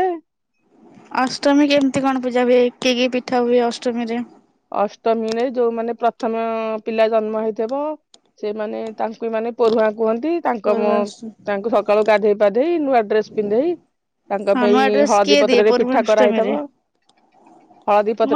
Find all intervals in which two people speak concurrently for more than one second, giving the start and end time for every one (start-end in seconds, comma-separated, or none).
14.6-16.5